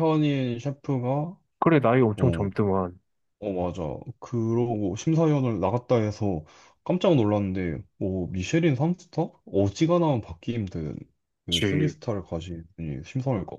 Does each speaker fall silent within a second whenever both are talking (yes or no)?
yes